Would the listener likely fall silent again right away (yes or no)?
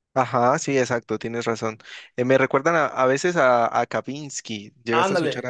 no